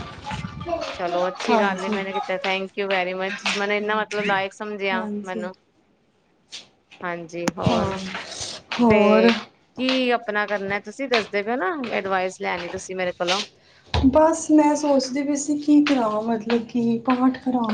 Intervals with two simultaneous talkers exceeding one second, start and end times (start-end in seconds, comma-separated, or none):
none